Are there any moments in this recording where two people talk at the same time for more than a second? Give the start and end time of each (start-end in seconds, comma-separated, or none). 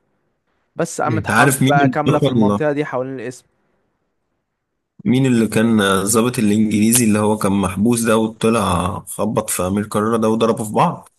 1.1-2.6